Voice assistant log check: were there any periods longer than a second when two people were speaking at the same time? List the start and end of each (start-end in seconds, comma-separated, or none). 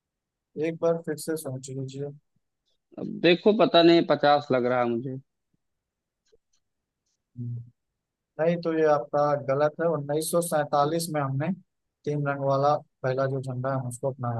none